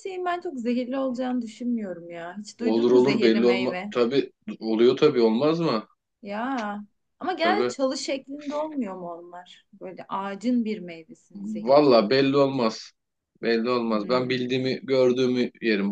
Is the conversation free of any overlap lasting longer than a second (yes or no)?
no